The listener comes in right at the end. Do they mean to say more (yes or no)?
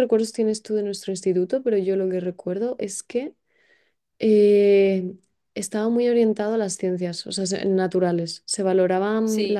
no